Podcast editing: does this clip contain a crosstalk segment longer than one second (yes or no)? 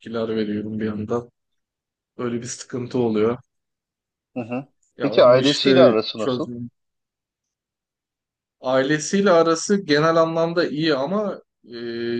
yes